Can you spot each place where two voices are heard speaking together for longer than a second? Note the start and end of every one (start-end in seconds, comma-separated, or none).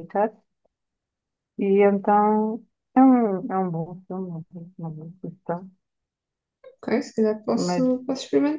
none